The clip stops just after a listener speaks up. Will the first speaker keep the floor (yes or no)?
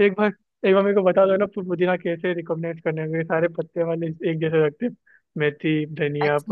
no